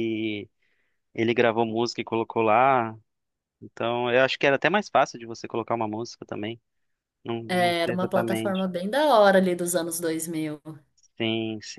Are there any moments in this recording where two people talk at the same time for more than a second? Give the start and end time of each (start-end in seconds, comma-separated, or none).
7.5-8.7